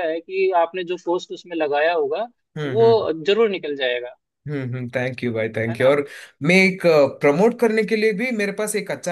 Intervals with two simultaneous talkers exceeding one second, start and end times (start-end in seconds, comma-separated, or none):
none